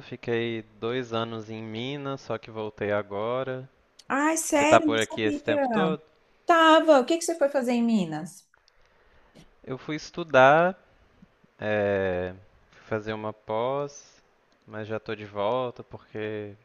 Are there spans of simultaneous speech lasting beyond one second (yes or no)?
yes